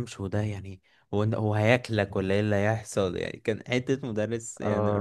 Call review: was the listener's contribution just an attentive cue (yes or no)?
no